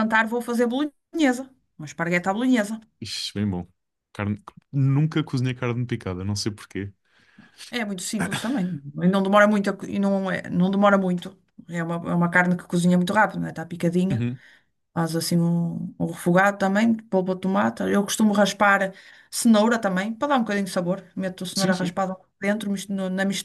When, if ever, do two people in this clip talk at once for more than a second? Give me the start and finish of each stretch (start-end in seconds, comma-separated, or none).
none